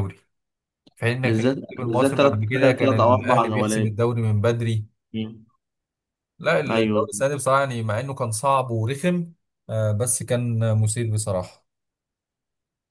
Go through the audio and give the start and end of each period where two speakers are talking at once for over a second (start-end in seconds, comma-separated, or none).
1.2-3.9